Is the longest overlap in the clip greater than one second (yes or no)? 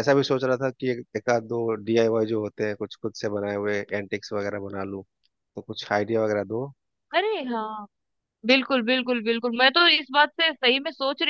no